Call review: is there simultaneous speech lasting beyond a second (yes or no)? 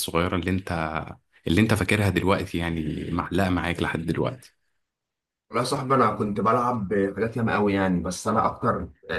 no